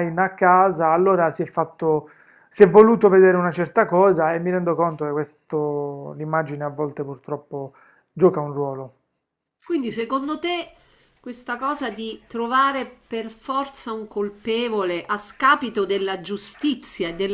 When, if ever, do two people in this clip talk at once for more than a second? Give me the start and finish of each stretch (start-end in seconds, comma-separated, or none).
none